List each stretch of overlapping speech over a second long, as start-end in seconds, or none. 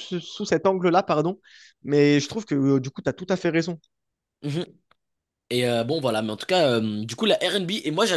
none